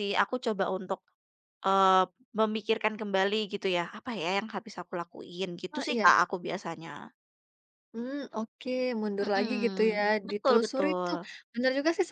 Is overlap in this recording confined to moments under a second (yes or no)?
no